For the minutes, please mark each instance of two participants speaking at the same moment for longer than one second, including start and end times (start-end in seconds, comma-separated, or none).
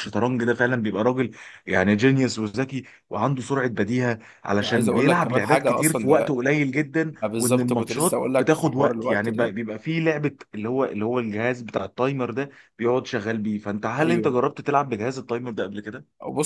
4.6-6.4, 7.2-9.6